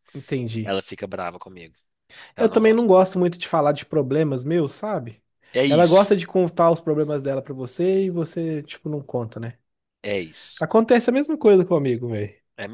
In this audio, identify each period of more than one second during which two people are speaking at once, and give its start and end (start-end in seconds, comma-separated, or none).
none